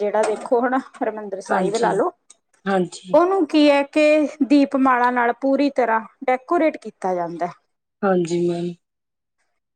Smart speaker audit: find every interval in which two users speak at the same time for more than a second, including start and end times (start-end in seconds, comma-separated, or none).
none